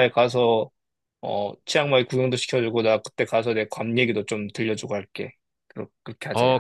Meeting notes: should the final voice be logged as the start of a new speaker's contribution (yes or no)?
yes